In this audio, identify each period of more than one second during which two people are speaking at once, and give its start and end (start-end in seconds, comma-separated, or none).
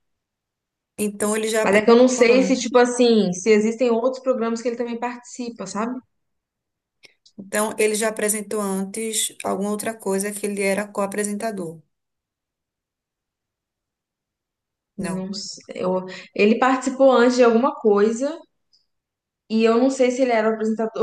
1.6-2.8